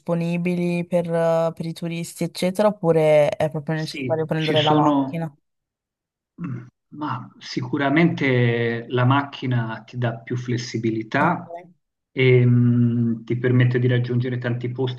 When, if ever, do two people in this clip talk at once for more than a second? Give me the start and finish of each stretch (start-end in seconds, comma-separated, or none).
3.7-5.2